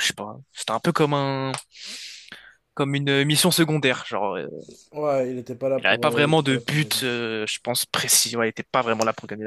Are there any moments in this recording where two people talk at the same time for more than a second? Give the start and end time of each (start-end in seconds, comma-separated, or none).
5.8-7.0